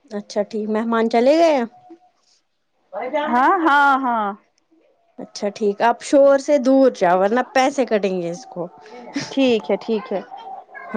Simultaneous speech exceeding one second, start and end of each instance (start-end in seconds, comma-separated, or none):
none